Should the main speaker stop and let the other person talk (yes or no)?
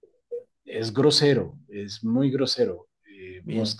no